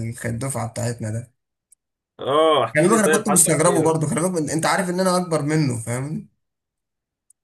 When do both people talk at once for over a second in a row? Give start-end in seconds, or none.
2.8-4.1